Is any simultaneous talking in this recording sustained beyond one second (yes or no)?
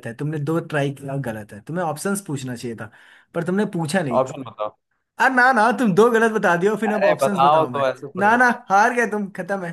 yes